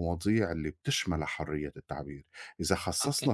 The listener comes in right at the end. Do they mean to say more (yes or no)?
no